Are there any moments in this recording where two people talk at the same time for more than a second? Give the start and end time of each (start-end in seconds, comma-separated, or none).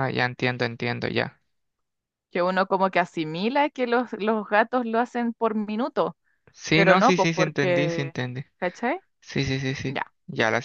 6.7-8.2